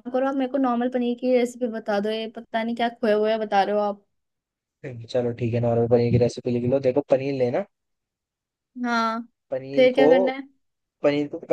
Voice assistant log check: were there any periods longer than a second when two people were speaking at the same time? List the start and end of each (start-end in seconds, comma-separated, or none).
none